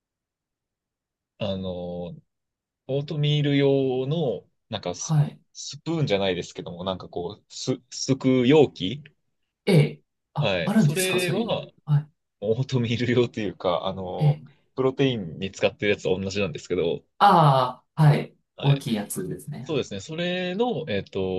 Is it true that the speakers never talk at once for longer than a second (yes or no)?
no